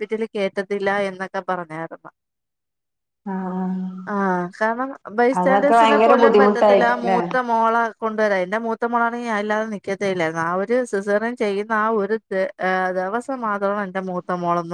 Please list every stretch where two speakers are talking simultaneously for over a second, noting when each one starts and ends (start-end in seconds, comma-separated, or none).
5.4-7.2